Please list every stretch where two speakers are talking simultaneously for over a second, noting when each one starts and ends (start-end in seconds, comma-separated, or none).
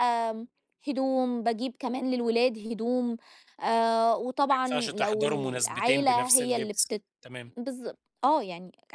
4.5-7.0